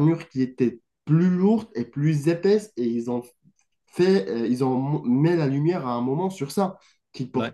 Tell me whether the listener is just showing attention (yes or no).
yes